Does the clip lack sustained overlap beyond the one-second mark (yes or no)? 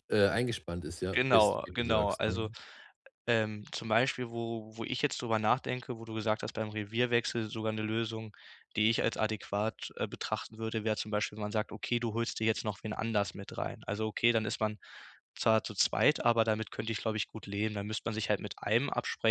no